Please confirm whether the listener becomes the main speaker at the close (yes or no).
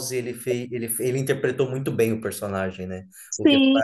yes